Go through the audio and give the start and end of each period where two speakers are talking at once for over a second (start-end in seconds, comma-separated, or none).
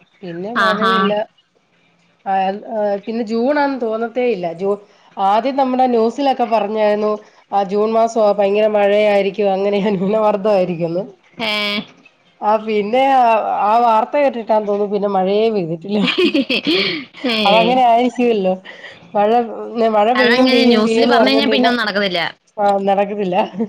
20.2-21.7